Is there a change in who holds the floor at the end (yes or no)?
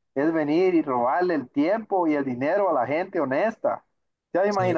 no